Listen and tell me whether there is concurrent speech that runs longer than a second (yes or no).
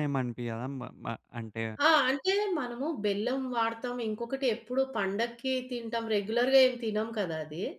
no